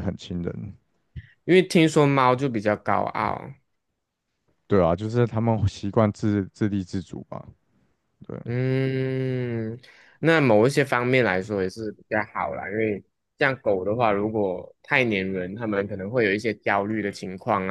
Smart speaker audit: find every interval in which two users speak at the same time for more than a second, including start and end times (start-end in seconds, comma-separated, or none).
none